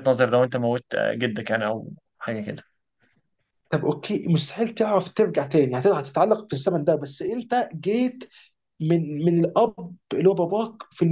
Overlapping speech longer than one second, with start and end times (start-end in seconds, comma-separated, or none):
none